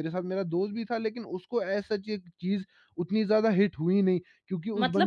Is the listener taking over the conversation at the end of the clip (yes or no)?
yes